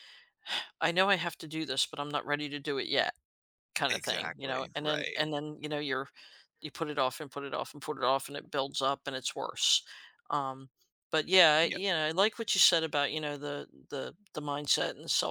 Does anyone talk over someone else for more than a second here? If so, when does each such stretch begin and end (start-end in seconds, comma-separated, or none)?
3.9-5.3